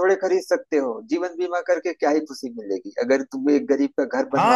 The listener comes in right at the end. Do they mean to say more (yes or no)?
yes